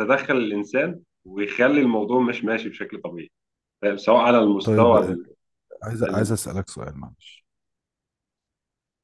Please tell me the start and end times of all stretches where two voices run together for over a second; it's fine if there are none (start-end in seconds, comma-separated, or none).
none